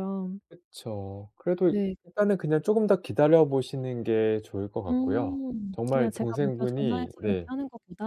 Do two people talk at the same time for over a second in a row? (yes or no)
yes